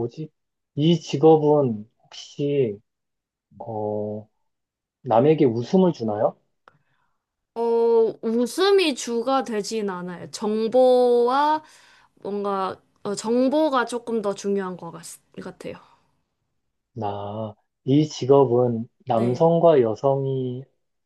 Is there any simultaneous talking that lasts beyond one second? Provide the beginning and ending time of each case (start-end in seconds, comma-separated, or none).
none